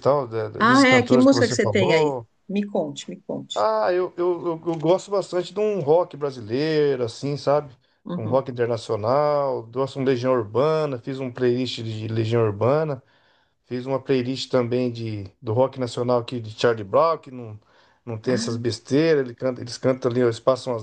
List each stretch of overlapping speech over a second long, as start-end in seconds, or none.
0.6-2.3